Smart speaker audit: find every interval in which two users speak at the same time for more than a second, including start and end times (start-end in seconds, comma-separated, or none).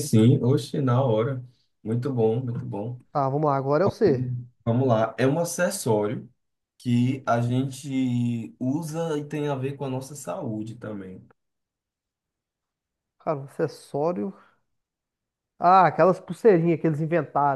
none